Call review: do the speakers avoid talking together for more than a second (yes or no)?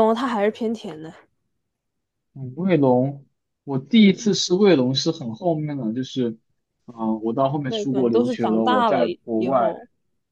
no